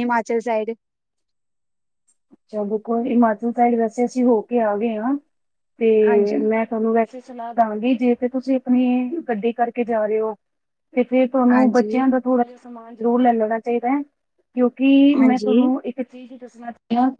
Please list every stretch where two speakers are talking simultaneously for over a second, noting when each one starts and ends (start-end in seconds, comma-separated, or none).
none